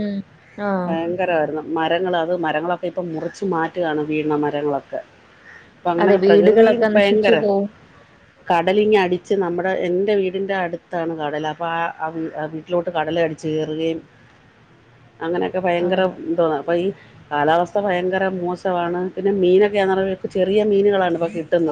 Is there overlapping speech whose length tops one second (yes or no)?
yes